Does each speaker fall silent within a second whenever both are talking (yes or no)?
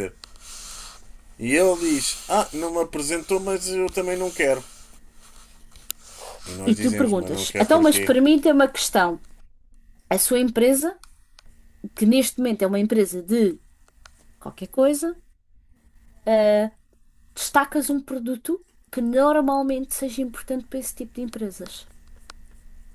no